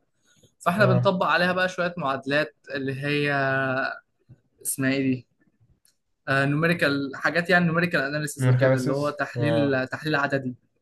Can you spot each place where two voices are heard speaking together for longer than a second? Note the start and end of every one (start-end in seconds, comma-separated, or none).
8.4-9.8